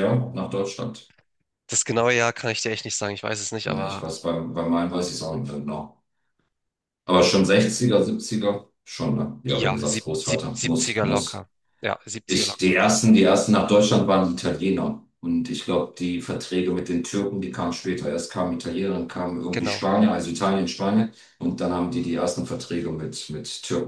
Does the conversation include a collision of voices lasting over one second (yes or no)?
yes